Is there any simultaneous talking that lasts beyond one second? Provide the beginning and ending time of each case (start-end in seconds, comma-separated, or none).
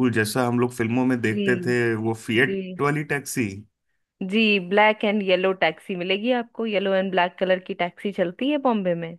none